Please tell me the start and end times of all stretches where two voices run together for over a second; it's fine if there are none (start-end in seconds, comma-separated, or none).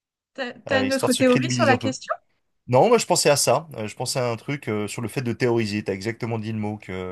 0.7-1.9